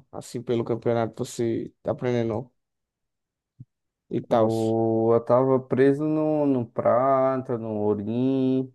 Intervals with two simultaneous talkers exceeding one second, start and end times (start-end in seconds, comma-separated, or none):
none